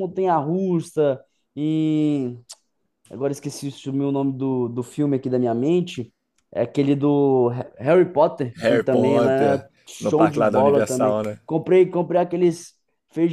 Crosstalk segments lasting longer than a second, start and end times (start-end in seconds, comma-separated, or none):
8.6-11.4